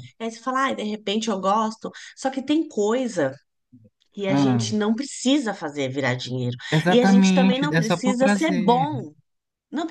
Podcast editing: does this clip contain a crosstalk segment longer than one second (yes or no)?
yes